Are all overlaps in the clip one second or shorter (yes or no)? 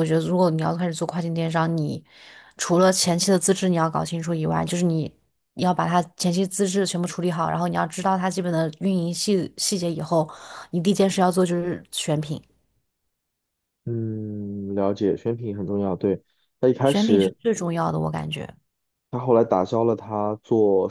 yes